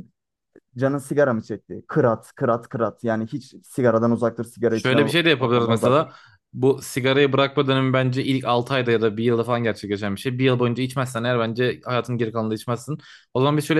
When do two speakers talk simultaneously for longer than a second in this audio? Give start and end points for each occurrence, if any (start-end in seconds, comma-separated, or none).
4.7-6.1